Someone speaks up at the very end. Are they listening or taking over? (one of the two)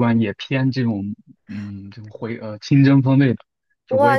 taking over